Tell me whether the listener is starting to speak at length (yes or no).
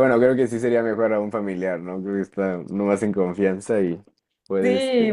yes